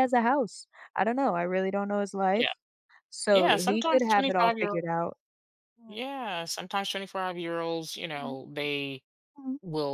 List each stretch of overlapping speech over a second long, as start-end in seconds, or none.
3.3-4.8